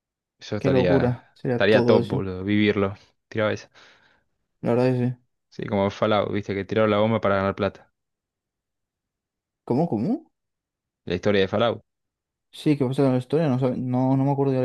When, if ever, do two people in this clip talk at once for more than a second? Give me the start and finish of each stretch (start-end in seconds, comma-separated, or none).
0.6-2.2